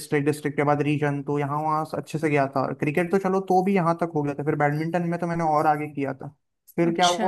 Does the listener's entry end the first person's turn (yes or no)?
no